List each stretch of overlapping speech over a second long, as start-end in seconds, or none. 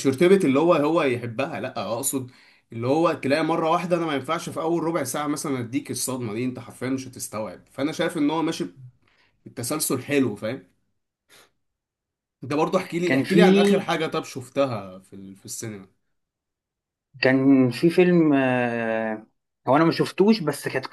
none